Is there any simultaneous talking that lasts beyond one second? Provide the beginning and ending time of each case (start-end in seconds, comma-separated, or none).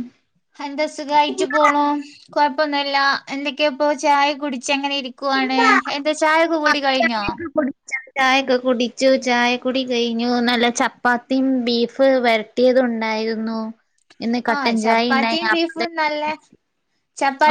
none